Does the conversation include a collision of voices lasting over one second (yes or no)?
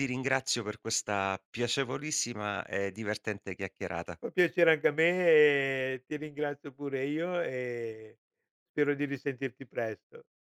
no